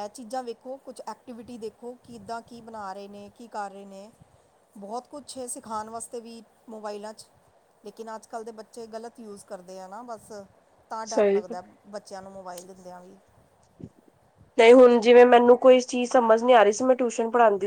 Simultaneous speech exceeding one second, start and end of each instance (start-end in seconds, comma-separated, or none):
none